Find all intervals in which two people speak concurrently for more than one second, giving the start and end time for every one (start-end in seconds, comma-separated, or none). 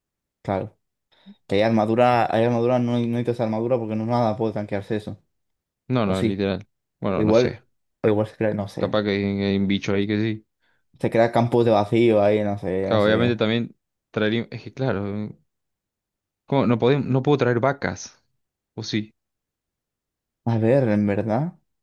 none